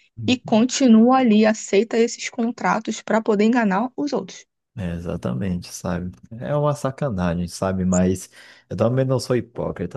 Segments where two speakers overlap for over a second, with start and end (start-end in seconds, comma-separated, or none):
none